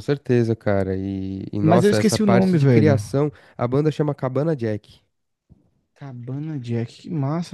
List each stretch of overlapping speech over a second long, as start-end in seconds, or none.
1.6-3.0